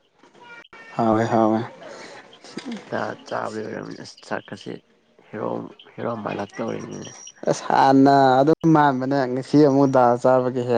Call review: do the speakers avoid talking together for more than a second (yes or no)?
yes